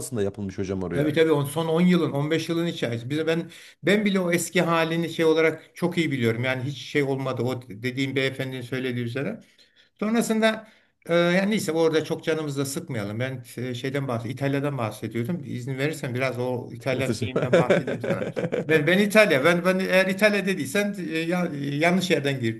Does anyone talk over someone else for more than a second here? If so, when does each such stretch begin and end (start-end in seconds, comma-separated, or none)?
none